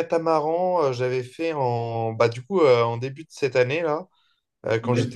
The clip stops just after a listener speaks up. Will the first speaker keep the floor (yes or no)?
yes